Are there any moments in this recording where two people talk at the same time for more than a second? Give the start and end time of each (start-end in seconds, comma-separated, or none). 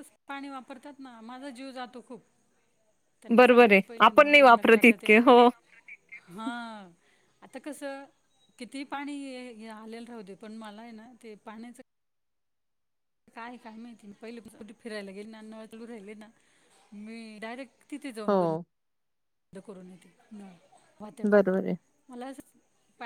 3.4-5.1